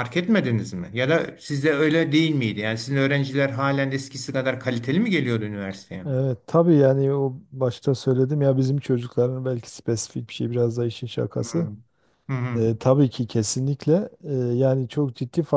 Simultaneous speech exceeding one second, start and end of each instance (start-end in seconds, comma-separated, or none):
none